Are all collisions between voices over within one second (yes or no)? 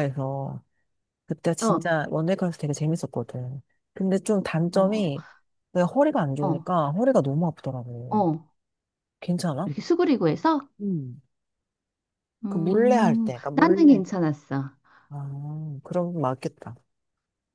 no